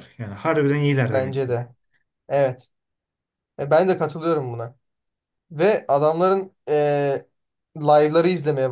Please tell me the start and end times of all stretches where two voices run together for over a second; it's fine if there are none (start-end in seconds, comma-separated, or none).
none